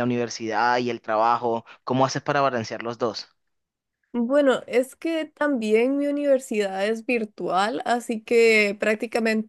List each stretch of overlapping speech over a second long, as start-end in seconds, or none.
none